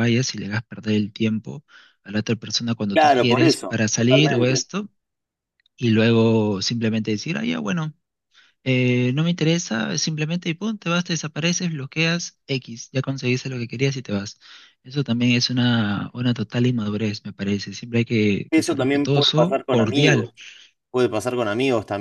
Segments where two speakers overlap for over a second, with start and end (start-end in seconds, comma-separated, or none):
2.9-4.7, 18.5-20.3